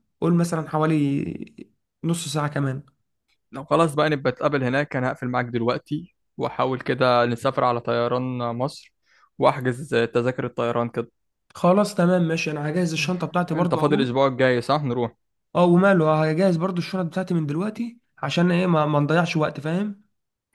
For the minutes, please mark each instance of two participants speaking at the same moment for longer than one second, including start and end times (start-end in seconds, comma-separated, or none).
none